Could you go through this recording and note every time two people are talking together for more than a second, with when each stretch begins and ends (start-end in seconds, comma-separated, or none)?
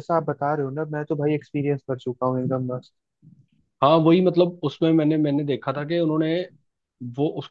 none